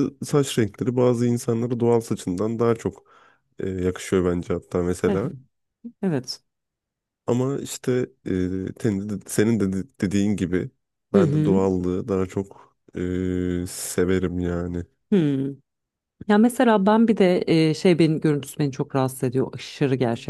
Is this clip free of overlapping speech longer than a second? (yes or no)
yes